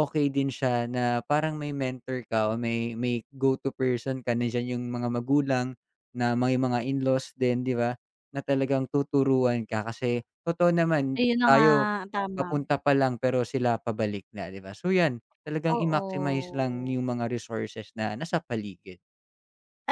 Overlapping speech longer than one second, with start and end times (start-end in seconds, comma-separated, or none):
15.8-17.0